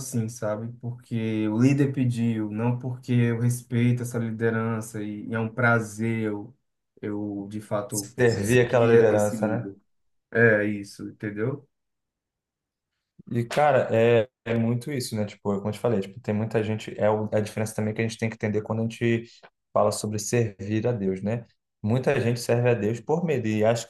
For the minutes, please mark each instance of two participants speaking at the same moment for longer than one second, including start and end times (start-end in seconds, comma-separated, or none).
8.0-9.7